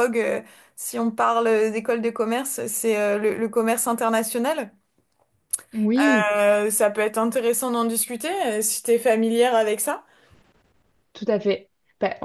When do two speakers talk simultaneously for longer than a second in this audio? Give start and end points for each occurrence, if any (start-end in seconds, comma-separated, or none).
none